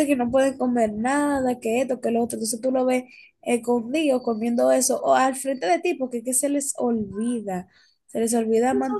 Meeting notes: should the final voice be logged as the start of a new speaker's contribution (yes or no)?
yes